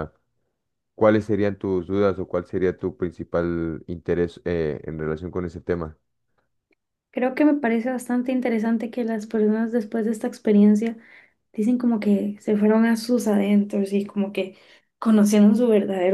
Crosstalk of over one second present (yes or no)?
no